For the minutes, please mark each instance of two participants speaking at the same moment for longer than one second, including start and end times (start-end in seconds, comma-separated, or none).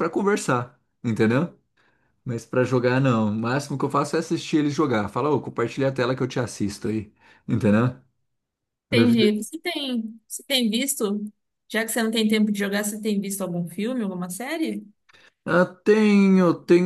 none